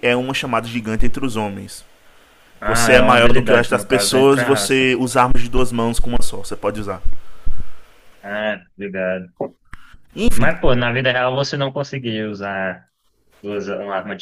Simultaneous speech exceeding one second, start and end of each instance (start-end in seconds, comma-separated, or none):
2.6-4.8